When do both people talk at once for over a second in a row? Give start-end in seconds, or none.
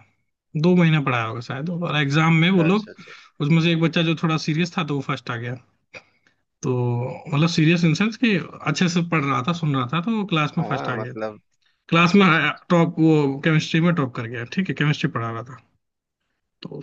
none